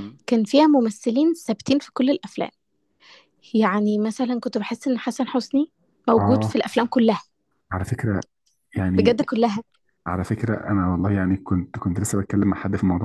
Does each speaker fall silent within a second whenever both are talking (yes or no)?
yes